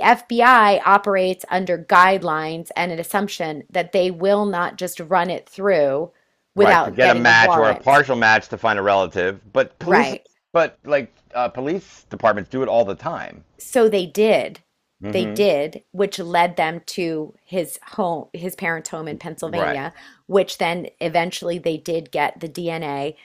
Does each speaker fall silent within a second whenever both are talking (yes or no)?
no